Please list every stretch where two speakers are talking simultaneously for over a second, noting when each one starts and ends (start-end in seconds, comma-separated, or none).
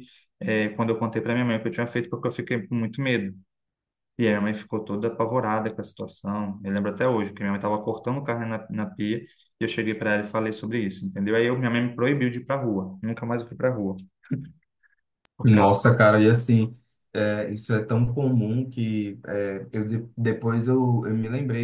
none